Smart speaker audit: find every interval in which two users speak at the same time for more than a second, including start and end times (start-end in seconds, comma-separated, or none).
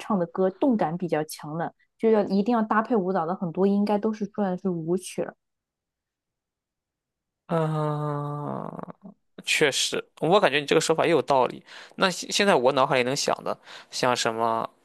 none